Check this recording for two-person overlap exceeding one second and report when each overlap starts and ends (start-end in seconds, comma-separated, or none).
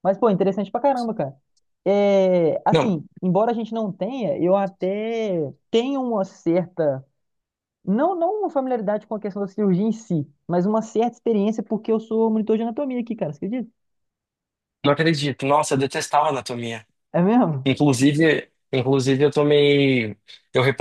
none